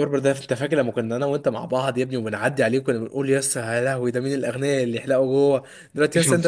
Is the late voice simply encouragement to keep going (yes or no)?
yes